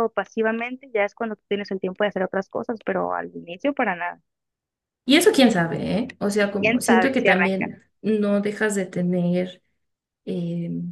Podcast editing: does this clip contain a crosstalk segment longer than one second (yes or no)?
yes